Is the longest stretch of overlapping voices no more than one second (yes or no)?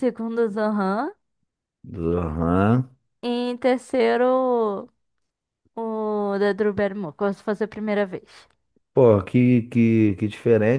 yes